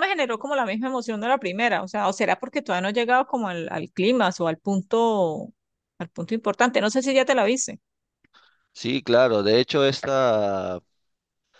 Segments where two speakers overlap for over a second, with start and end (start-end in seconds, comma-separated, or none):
none